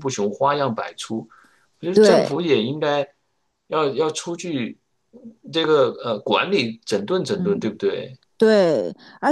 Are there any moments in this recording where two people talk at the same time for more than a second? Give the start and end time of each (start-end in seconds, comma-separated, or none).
none